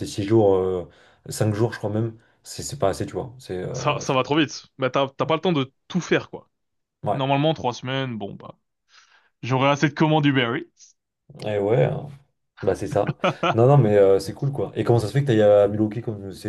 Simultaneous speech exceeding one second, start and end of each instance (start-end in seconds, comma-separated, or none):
none